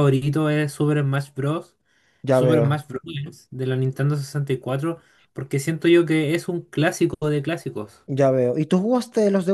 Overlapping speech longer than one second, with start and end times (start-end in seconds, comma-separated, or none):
none